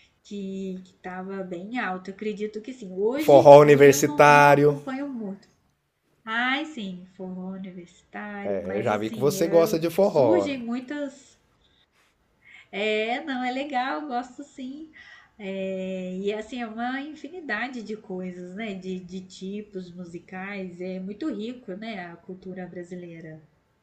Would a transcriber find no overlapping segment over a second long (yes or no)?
no